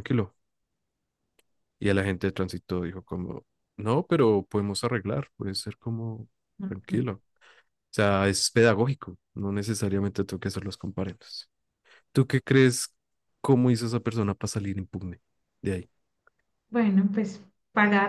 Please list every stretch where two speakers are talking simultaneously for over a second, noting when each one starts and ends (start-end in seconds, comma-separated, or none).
none